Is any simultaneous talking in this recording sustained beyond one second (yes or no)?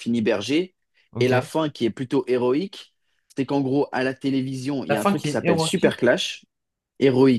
yes